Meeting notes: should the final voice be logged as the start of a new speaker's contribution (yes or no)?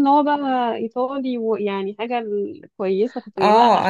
yes